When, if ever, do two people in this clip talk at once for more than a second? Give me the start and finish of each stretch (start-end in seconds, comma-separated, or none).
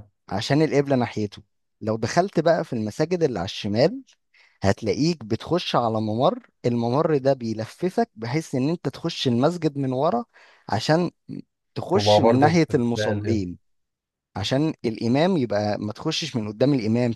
11.9-13.4